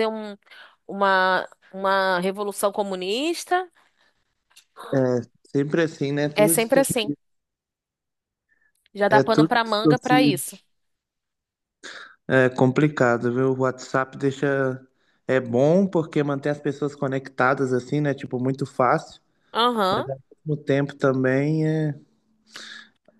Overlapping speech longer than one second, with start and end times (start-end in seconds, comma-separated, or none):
9.1-10.4